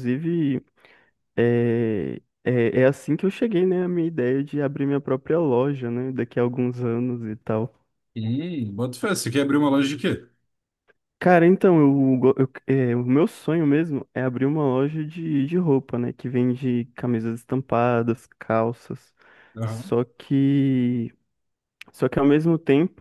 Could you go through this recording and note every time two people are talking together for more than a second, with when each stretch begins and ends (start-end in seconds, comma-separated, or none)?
none